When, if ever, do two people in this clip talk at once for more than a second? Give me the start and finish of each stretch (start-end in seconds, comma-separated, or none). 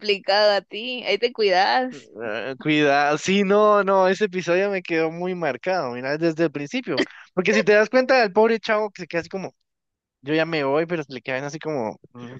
none